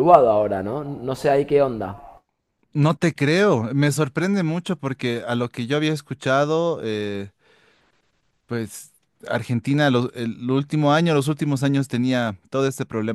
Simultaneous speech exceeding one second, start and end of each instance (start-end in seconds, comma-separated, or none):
none